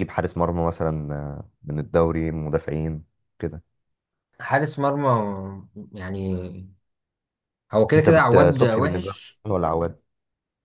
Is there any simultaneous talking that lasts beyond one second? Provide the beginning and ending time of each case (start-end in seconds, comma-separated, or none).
8.0-9.4